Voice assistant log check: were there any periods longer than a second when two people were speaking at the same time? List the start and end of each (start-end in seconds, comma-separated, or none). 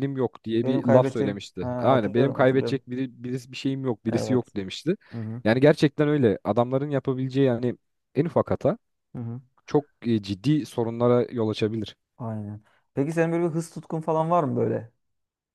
0.6-2.8